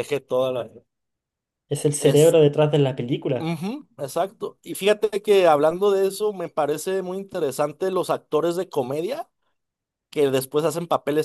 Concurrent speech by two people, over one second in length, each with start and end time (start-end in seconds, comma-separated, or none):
none